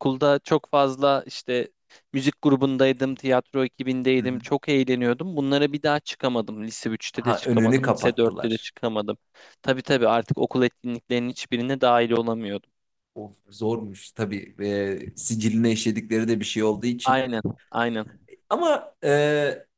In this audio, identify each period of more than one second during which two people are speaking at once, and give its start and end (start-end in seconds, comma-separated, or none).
7.1-8.7